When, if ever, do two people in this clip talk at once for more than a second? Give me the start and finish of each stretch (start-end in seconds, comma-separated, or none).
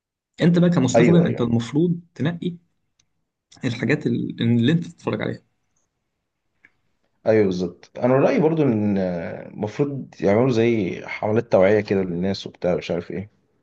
none